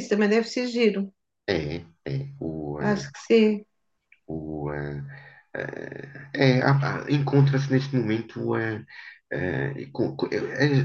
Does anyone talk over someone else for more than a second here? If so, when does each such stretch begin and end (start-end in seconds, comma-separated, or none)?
none